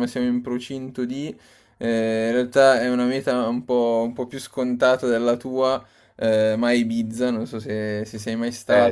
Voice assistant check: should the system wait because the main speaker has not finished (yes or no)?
yes